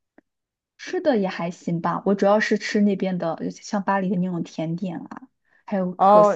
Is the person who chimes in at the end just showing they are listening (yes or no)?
no